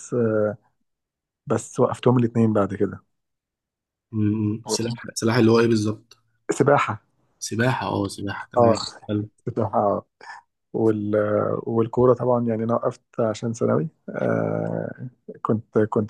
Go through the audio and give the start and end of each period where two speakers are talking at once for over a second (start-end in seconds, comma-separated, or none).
none